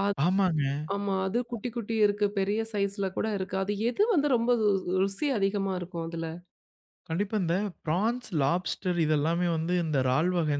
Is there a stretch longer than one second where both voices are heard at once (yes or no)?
no